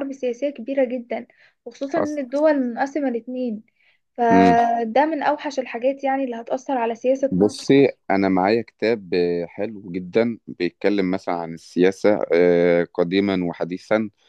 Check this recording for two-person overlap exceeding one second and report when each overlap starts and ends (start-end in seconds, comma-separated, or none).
none